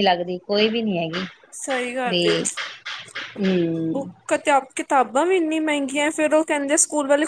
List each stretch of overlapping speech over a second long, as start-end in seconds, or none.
none